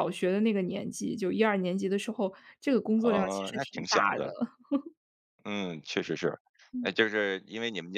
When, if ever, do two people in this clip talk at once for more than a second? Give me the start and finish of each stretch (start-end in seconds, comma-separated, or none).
3.0-4.3